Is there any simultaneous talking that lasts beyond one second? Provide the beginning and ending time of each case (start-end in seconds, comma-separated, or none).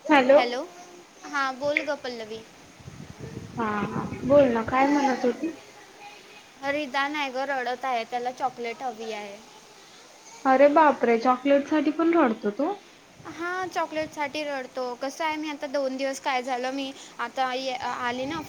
none